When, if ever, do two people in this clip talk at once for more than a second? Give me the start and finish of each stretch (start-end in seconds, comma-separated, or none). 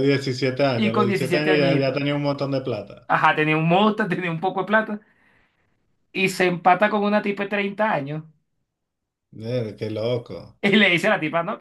0.7-2.0